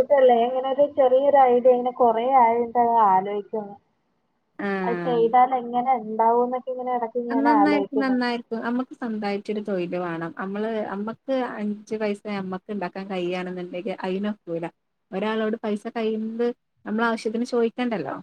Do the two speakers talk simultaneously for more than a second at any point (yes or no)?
no